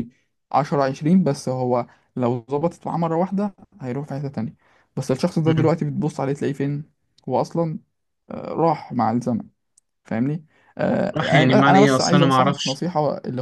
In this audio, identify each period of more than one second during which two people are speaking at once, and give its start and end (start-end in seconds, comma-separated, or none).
11.2-12.8